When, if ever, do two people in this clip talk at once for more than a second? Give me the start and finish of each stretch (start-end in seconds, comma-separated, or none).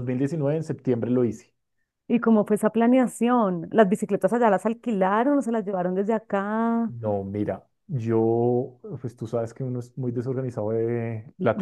none